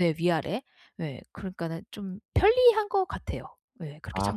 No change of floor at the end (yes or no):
no